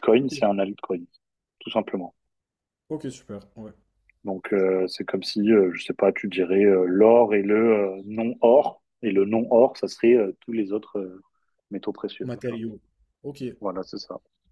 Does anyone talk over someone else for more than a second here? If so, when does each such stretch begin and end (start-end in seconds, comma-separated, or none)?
none